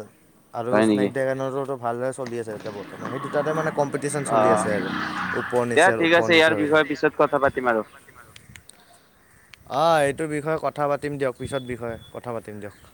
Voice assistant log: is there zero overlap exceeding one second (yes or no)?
no